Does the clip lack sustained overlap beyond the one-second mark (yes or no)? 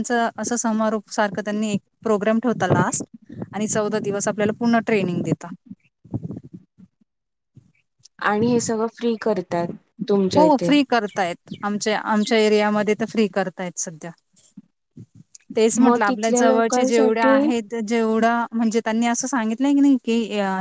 no